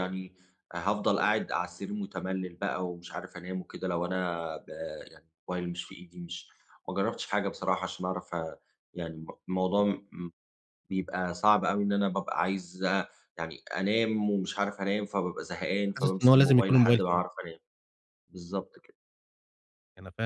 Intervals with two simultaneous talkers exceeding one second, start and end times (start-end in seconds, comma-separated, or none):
16.0-17.2